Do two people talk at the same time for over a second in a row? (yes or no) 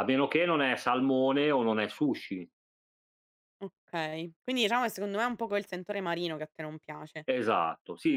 no